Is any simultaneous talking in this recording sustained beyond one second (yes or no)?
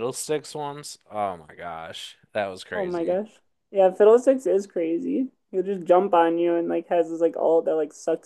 no